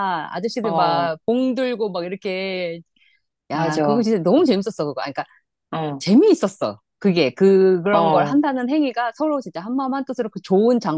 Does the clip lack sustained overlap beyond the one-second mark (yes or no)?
yes